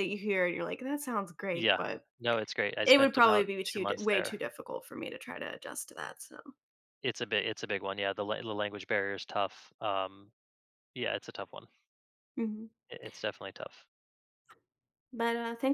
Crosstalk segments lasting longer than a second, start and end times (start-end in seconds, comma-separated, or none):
2.9-4.4